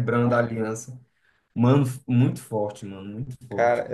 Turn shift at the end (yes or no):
no